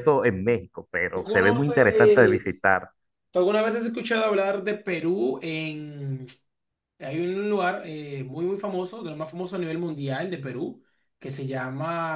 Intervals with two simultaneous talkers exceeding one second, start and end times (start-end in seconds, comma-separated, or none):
1.1-2.4